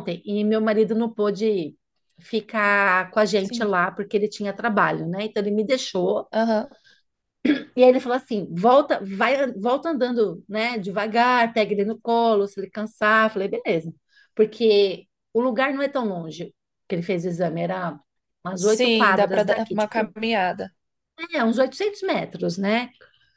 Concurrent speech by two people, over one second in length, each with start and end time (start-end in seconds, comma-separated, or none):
18.5-20.1